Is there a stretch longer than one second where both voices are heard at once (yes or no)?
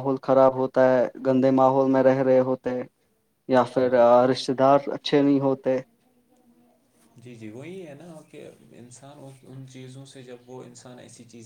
no